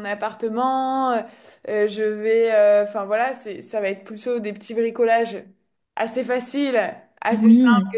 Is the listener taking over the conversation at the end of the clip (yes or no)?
no